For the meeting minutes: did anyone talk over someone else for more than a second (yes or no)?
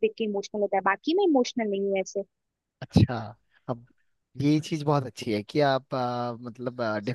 no